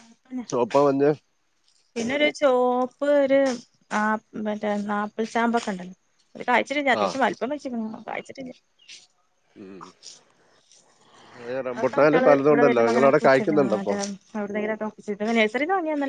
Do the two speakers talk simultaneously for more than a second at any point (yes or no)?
yes